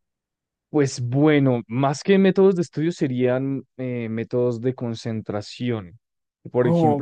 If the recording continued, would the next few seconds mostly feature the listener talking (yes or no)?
yes